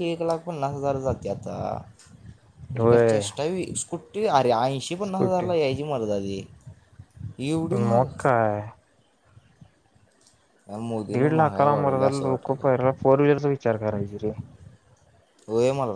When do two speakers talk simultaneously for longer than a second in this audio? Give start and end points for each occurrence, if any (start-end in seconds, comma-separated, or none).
11.2-12.7